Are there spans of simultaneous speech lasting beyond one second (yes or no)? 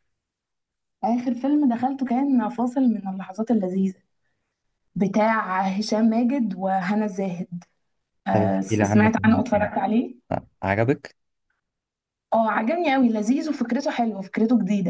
yes